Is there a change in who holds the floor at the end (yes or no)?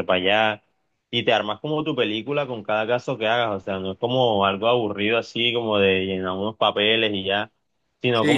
no